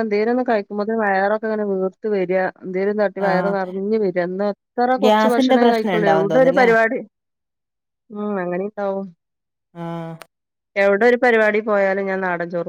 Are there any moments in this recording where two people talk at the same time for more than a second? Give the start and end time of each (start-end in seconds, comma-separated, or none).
5.0-6.7